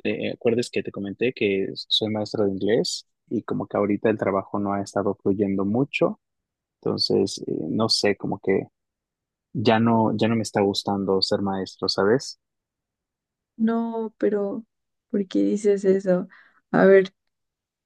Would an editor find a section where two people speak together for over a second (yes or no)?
no